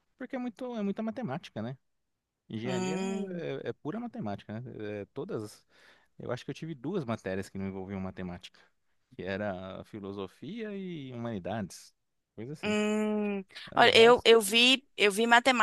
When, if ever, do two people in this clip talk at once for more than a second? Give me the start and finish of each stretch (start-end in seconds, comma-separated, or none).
none